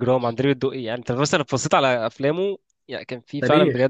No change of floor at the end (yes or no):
no